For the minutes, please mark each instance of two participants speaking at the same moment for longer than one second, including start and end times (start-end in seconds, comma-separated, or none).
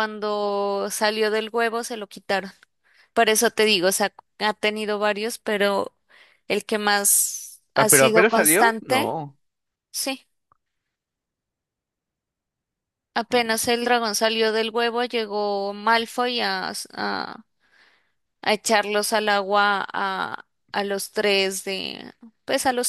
7.8-9.2